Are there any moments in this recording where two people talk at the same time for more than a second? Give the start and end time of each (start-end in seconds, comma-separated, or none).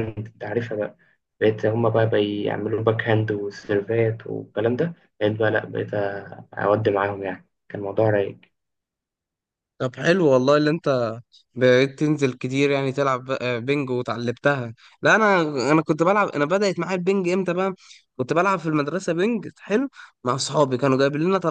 none